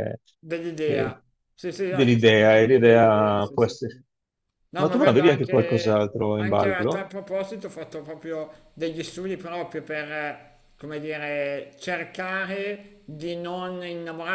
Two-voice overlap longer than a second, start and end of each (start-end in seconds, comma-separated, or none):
1.9-4.0, 4.8-7.1